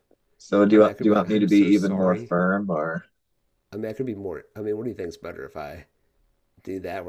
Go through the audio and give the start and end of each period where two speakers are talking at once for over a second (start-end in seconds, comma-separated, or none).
0.7-2.3